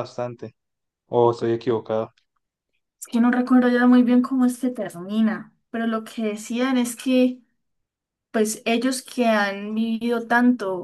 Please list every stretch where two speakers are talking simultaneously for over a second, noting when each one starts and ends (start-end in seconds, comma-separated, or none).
none